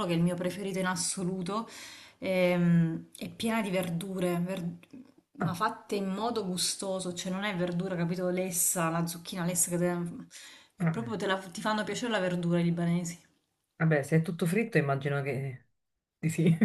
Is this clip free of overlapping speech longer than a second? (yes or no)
yes